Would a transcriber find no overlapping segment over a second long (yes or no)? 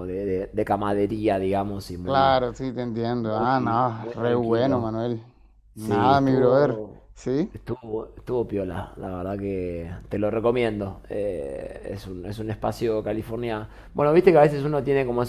no